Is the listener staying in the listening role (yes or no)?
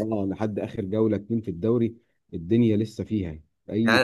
no